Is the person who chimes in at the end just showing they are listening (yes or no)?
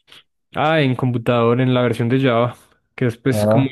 yes